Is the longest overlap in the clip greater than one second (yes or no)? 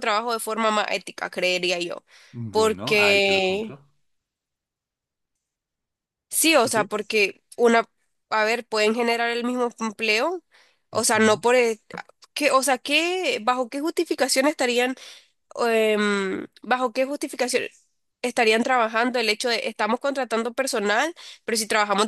yes